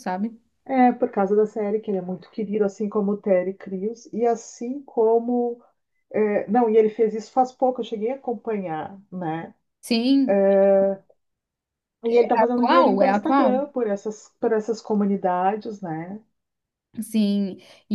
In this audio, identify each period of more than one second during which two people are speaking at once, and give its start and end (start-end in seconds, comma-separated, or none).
12.4-13.7